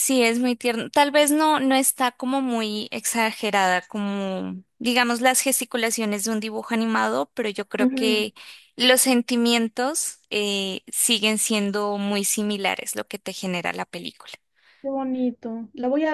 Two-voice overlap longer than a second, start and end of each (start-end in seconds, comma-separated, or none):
none